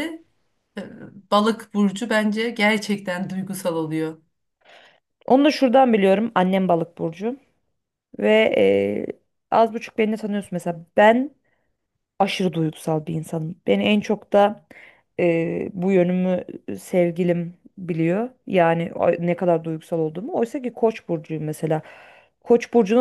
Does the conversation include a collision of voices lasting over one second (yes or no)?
no